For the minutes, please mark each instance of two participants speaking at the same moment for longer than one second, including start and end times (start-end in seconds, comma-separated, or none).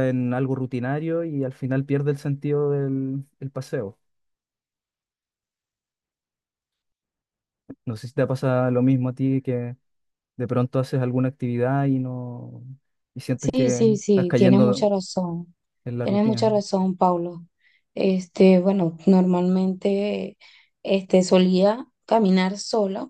13.3-14.9